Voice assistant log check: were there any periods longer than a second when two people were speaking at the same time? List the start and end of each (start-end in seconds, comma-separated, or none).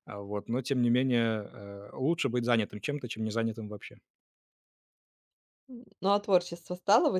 none